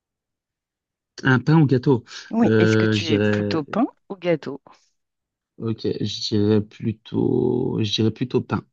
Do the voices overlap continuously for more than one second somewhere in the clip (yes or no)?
yes